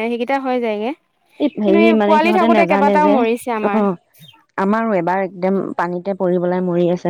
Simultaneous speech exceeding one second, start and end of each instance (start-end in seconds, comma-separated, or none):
1.6-3.7